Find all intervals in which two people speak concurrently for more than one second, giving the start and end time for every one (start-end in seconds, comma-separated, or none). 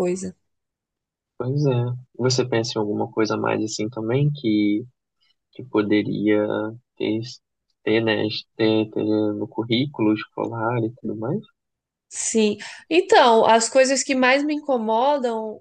none